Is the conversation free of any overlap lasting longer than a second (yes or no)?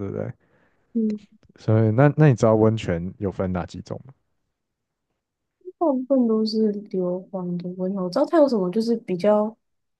yes